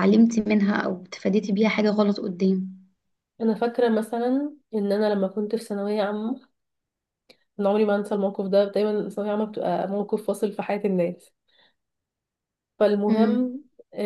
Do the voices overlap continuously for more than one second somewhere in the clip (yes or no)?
no